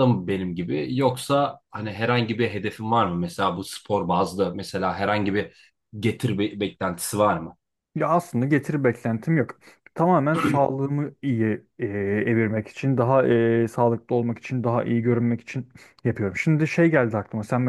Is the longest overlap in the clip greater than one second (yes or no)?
no